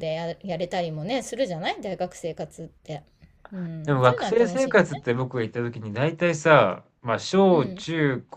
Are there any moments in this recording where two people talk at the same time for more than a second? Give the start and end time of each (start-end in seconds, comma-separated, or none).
3.8-5.1